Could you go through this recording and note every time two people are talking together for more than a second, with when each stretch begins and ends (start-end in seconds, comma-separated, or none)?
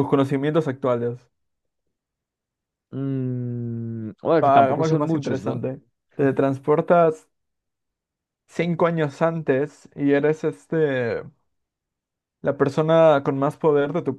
4.4-5.6